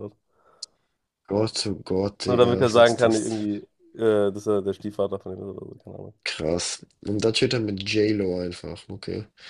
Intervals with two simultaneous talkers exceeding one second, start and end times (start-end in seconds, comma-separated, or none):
2.2-3.5